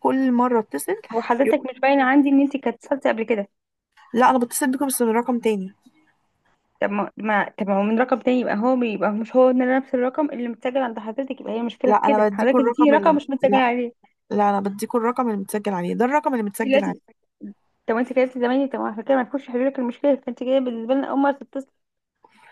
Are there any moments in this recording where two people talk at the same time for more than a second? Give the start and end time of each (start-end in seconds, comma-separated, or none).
11.8-13.6